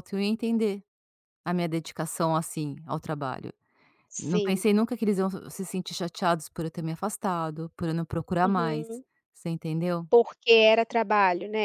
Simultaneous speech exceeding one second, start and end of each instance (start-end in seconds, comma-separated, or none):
none